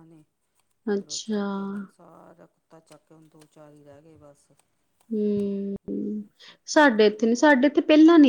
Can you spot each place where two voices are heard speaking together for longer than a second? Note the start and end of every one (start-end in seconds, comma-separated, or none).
none